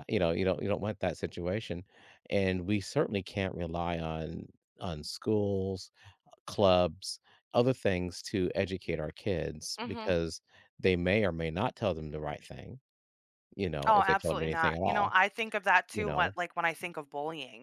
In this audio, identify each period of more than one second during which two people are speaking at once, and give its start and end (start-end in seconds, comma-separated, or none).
13.9-15.1